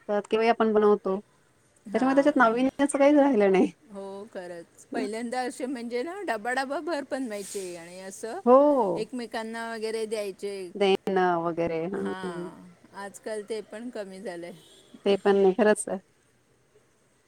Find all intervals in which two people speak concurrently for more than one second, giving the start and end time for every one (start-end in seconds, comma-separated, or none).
none